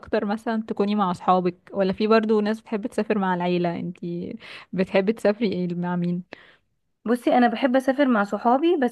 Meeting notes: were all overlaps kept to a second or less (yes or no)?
yes